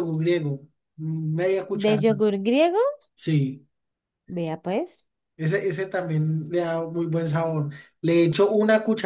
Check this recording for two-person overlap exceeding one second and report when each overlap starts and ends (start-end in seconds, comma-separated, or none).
none